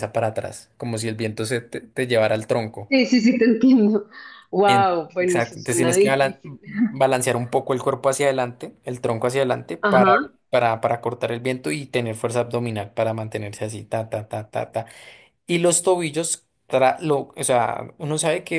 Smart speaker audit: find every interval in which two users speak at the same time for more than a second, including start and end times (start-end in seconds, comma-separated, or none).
4.7-6.4